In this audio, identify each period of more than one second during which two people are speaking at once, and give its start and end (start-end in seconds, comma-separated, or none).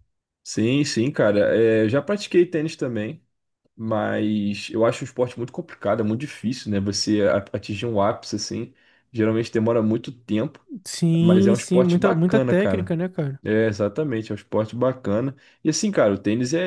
11.2-12.9